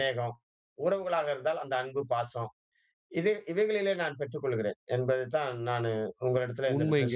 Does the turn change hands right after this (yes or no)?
yes